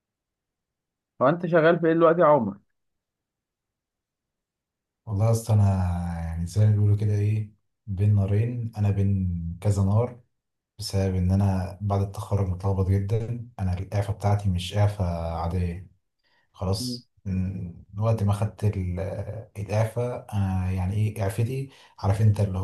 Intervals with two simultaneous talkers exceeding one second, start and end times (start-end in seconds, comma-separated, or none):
none